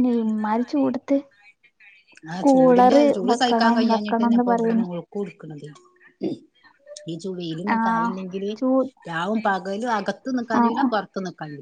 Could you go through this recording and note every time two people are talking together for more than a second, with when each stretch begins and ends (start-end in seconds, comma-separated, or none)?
2.4-4.8